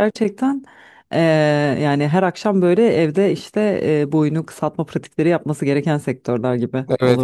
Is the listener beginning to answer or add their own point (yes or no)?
yes